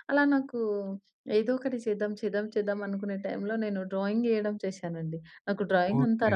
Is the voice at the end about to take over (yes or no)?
no